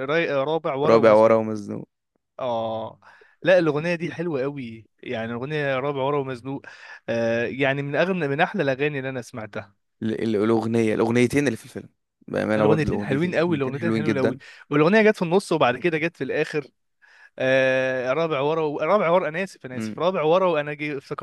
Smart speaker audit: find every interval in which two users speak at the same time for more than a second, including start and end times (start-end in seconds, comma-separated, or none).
12.6-14.4